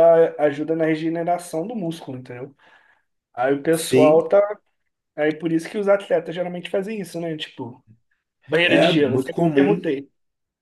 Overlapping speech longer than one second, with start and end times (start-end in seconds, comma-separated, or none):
8.6-9.9